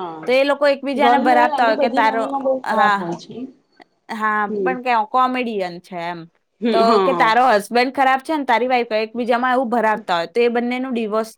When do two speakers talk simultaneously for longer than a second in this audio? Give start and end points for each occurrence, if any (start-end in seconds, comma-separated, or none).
1.0-3.2